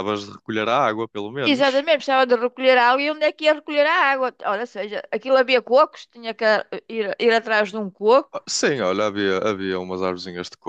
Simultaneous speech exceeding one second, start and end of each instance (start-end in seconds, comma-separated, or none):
none